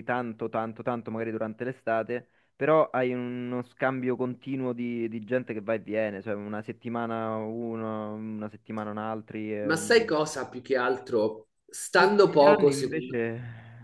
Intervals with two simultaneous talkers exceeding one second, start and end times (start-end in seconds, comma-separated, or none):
11.9-13.2